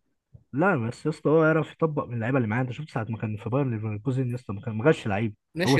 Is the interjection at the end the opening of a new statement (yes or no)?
yes